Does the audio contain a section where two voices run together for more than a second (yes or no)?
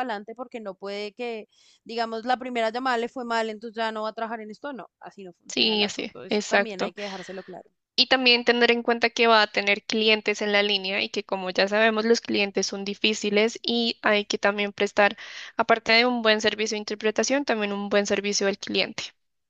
yes